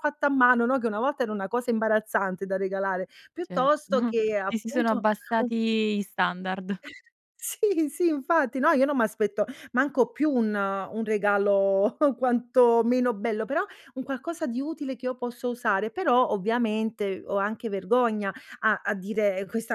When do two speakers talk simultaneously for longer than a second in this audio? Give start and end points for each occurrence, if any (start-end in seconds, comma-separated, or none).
3.4-5.5